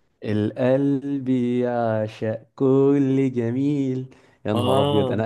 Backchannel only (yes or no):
yes